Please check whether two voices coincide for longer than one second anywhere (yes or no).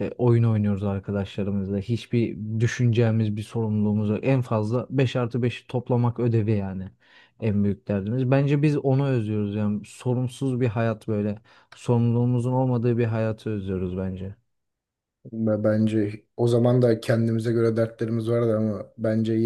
no